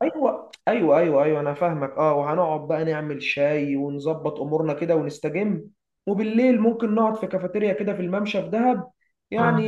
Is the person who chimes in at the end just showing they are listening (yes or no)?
yes